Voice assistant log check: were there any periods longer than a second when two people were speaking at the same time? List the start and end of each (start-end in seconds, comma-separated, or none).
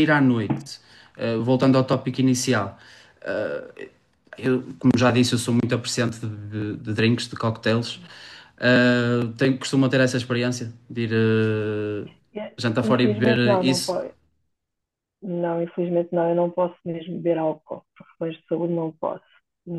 12.8-14.0